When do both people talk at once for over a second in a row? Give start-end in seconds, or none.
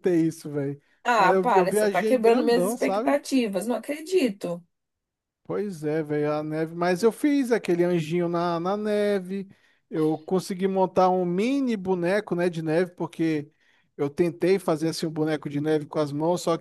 1.0-3.2